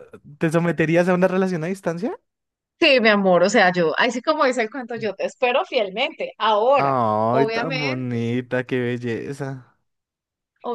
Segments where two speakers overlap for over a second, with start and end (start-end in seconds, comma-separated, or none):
6.8-8.3